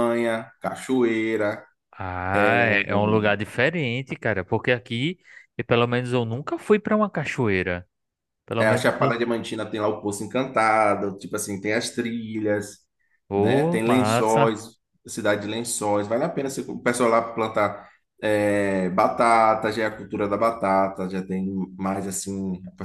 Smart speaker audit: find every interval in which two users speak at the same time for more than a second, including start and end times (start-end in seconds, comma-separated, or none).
13.3-14.6